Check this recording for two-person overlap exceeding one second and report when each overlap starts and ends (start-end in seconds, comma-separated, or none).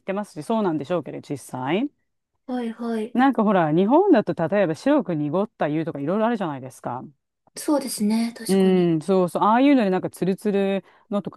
none